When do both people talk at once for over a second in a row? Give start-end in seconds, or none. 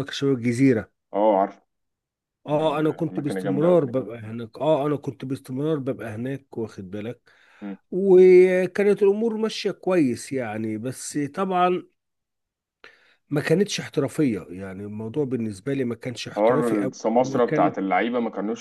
2.5-3.8, 16.3-17.8